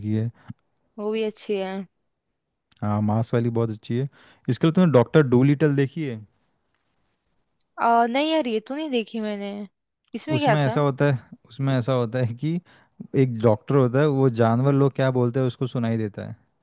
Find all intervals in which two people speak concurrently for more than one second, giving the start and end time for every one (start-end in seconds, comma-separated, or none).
none